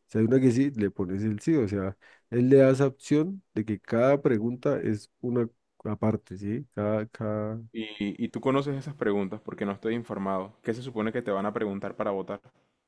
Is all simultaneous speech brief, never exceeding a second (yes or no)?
yes